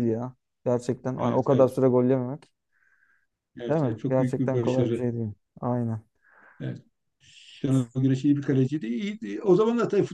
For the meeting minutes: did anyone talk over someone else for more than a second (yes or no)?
yes